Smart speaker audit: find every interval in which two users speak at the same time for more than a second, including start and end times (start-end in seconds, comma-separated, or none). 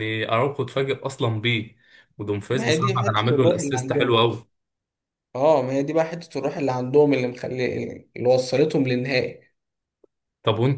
2.5-4.2